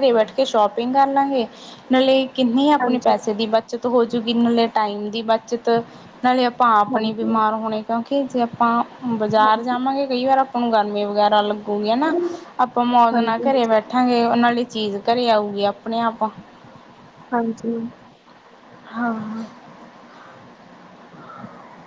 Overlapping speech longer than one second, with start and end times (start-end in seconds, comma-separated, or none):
none